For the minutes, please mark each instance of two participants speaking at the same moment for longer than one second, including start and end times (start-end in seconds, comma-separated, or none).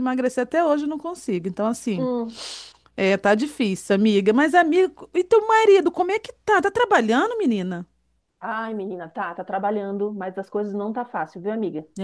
none